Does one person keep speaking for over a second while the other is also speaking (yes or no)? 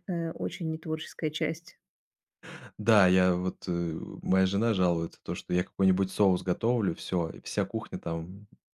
no